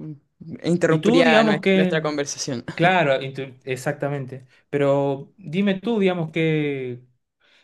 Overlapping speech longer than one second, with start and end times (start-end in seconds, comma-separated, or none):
0.9-2.1